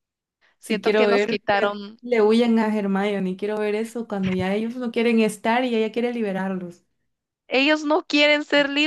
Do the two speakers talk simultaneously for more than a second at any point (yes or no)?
yes